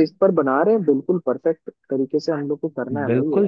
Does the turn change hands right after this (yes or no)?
yes